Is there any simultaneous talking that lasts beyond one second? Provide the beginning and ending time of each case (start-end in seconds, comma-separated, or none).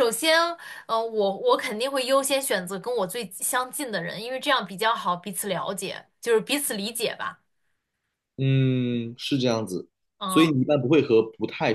none